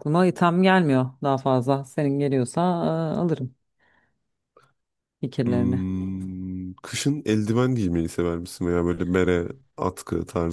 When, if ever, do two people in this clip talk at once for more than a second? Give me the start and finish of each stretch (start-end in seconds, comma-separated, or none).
none